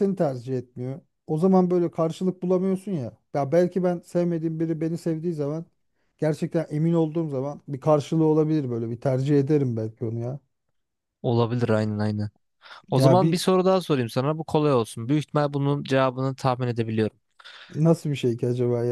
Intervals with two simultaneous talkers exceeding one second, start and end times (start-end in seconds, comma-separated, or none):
none